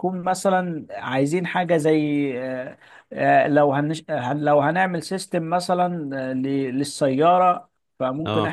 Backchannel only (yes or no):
yes